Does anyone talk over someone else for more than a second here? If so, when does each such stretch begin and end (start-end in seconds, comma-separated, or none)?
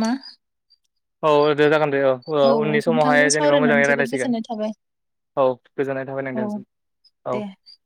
2.9-4.3